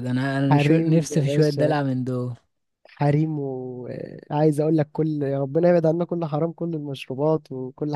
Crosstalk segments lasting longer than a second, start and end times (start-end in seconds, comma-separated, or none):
0.5-1.8